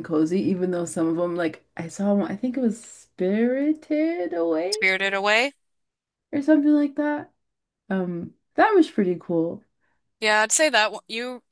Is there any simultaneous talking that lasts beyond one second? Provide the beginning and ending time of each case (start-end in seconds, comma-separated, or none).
none